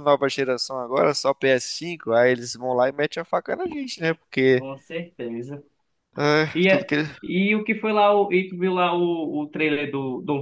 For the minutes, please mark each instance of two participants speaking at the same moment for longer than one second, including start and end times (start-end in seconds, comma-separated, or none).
none